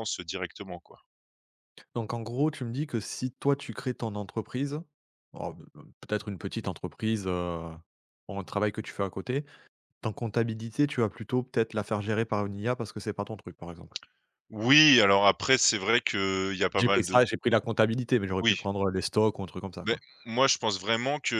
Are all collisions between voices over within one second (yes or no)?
yes